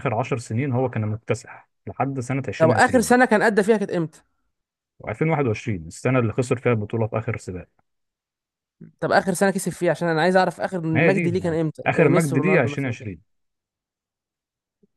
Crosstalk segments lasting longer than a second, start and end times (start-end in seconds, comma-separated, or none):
10.9-13.1